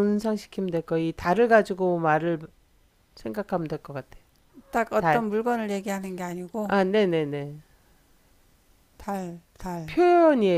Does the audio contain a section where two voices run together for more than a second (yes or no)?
no